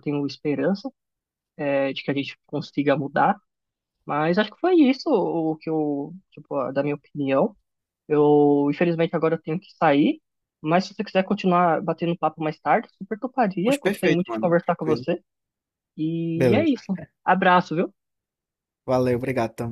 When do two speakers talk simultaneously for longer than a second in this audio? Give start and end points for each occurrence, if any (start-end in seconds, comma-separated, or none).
13.6-15.0